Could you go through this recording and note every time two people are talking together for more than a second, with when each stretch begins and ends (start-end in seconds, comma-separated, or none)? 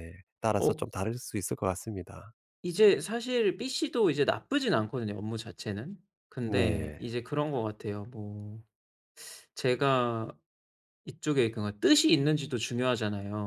none